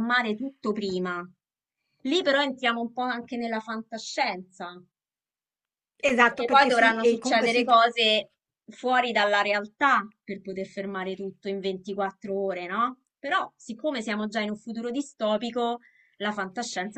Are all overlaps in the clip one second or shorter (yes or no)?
no